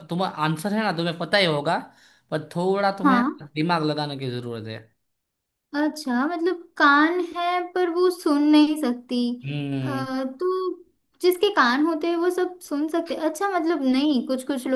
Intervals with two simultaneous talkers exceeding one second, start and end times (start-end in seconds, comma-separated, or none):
none